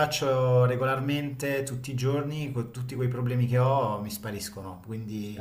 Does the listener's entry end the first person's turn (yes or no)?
no